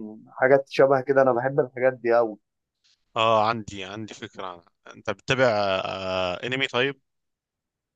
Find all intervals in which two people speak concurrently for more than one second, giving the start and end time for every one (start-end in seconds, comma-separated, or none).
none